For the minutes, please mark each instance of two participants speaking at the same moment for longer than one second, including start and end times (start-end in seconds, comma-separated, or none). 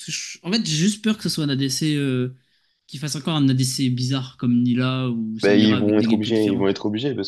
5.4-6.7